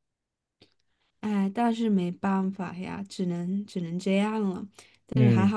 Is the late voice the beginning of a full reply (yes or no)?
yes